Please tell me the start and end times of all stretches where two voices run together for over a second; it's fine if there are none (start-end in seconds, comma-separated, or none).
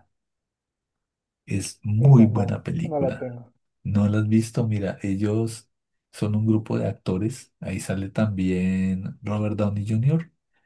2.0-3.4